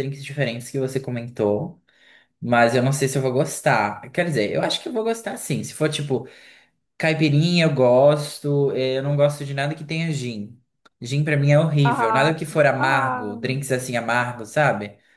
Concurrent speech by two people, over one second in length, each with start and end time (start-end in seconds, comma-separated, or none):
11.8-13.6